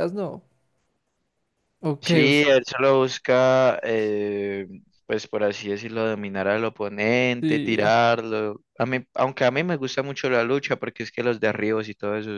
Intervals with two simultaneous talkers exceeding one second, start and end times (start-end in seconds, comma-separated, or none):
none